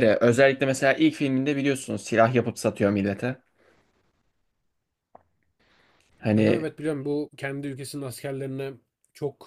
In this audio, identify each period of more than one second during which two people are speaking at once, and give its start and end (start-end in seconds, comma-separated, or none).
none